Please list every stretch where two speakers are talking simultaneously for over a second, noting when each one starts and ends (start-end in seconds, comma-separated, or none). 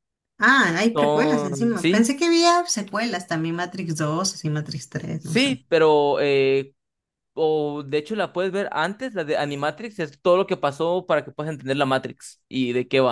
0.9-2.1